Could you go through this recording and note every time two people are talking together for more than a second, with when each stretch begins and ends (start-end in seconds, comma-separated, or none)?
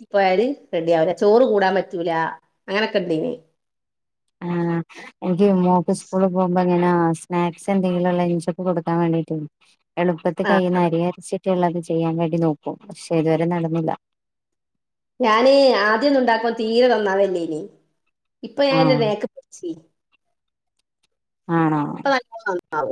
none